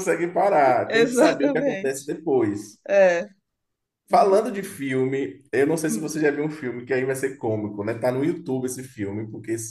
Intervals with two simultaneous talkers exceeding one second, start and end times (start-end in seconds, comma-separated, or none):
0.8-2.1